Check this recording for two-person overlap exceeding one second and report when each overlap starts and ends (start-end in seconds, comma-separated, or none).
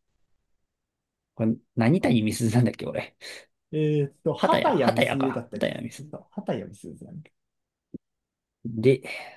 4.4-6.2